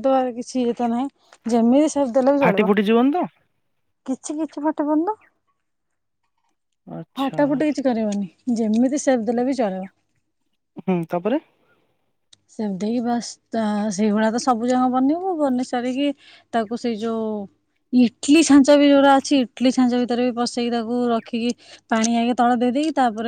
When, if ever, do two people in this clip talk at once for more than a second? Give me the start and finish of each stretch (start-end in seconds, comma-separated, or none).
none